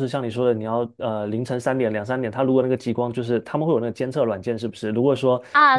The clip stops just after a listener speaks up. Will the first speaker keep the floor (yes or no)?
no